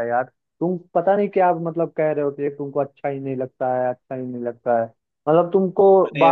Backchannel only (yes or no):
yes